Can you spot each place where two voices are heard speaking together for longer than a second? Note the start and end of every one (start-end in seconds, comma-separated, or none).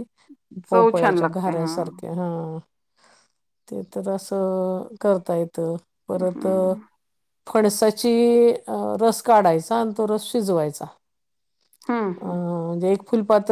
0.7-2.0